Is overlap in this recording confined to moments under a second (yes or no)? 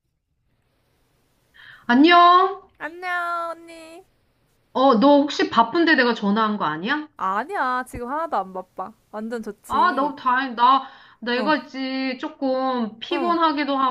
yes